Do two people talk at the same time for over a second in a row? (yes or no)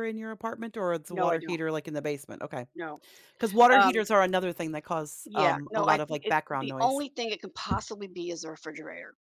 yes